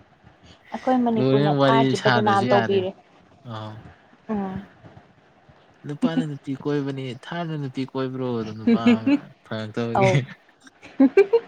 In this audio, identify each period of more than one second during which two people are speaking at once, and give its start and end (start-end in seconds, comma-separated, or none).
1.2-2.8